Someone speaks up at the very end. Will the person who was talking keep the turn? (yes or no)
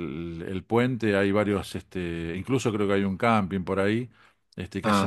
yes